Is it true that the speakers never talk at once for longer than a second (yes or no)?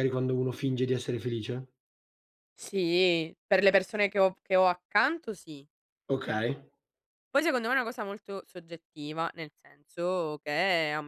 yes